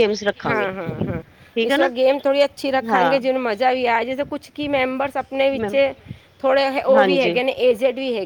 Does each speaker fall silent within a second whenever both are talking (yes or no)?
yes